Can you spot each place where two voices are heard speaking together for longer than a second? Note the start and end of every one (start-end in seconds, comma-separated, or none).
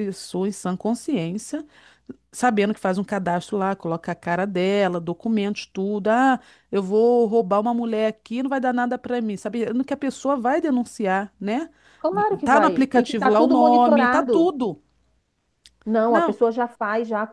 12.4-14.5